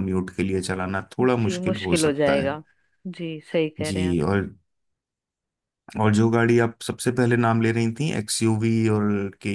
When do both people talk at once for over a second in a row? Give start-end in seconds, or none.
1.2-2.6